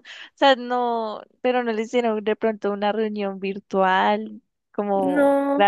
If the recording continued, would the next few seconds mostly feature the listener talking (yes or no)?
no